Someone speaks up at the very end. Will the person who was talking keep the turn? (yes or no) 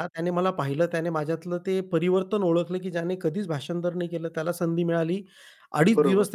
yes